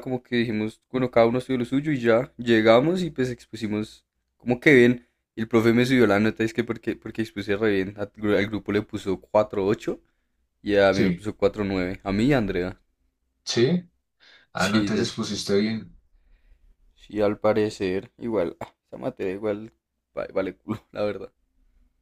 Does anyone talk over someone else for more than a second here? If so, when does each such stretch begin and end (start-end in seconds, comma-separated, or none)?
none